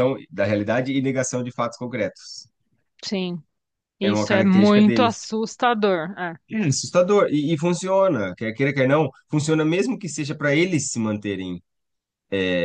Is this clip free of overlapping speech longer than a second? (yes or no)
no